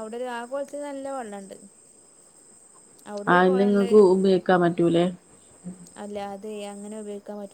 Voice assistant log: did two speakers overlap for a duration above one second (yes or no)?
no